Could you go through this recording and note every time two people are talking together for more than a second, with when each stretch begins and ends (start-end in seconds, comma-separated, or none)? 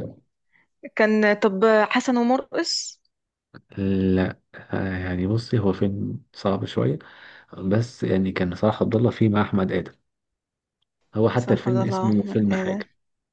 11.4-12.8